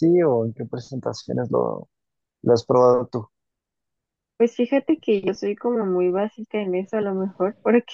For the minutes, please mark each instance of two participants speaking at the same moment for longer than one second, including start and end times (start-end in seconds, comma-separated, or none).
none